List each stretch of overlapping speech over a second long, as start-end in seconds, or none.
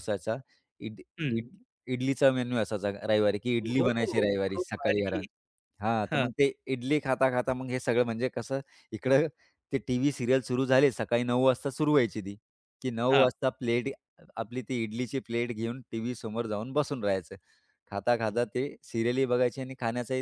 3.6-5.2